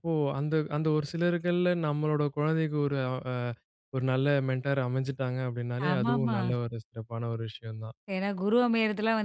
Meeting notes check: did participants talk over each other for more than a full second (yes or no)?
no